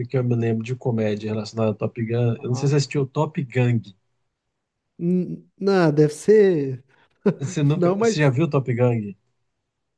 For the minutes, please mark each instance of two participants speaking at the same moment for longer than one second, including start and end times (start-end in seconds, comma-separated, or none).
none